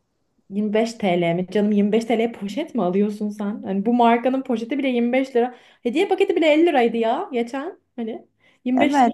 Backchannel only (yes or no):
no